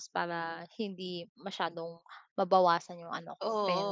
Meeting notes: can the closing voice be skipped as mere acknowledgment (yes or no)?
no